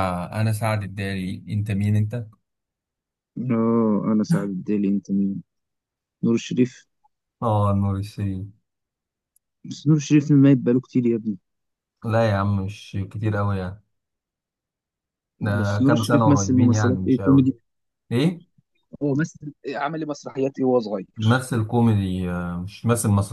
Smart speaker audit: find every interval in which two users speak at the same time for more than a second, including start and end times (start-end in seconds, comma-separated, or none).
15.6-17.5